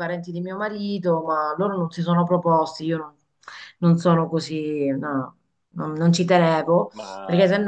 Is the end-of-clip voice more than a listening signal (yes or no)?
no